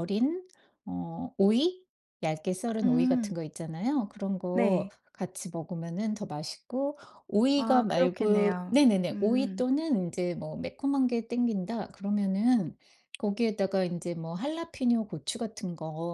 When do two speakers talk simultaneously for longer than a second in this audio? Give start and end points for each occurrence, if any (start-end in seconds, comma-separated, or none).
7.6-9.6